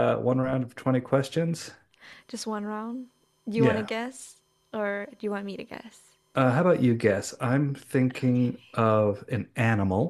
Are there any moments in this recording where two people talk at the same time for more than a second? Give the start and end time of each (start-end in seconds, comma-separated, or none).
none